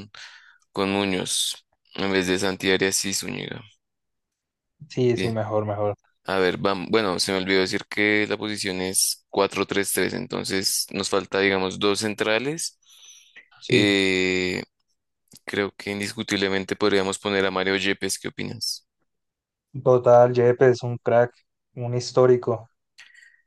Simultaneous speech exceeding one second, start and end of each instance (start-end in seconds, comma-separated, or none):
none